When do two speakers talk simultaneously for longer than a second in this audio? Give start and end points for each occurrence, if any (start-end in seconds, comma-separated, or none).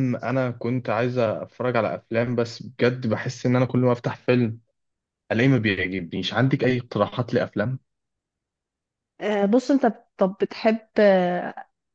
none